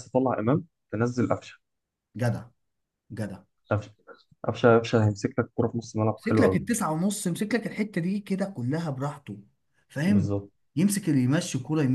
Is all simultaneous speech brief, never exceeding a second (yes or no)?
yes